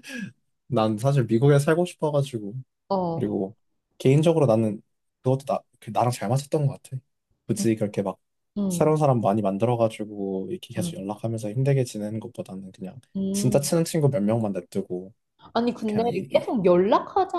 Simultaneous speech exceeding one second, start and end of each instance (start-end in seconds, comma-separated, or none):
none